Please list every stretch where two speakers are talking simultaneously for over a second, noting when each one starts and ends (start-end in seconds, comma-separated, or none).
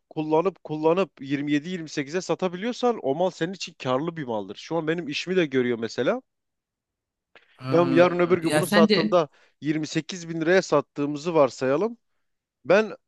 7.7-9.2